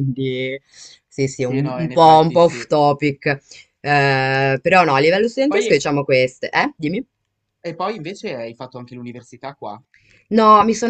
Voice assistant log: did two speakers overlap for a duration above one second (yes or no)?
yes